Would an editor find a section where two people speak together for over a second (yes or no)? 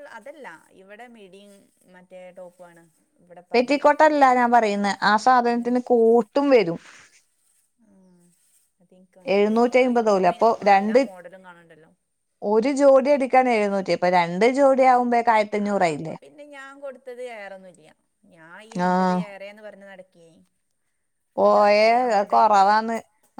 yes